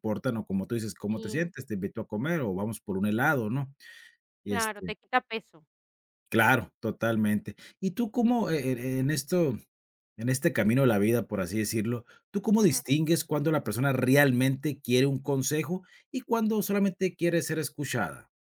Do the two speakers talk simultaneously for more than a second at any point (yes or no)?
no